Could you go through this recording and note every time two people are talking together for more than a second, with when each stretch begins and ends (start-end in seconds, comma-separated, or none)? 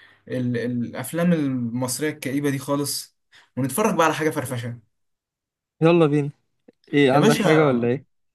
none